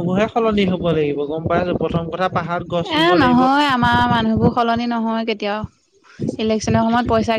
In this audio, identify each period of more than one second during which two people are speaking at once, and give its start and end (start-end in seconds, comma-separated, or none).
none